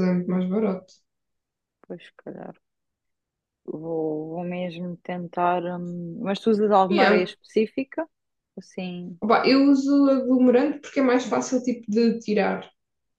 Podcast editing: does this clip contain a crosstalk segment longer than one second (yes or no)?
no